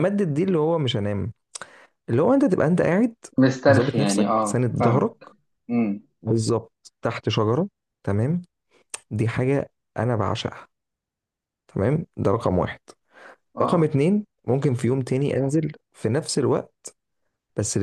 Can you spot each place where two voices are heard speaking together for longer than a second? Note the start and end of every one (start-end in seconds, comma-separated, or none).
3.7-5.2